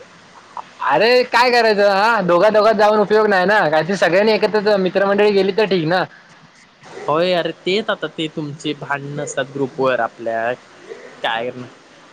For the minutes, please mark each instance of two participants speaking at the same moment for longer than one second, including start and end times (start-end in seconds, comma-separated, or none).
none